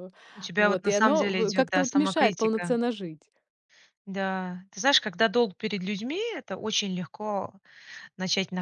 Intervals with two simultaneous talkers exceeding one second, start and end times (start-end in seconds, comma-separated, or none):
0.6-2.8